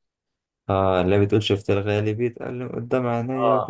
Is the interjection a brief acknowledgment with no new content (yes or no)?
no